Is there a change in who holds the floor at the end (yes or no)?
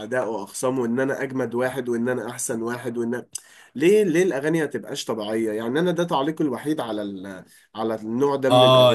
yes